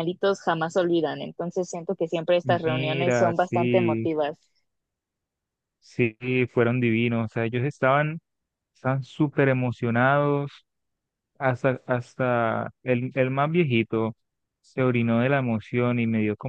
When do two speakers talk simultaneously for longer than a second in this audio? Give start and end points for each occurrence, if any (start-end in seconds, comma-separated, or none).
2.4-4.1